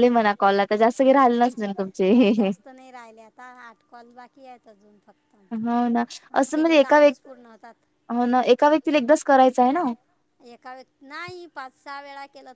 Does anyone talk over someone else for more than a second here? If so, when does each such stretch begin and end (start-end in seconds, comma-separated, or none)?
6.4-7.8